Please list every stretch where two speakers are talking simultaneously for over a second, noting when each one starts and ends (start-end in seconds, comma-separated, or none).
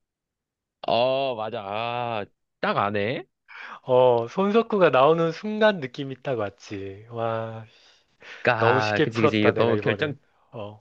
8.6-10.2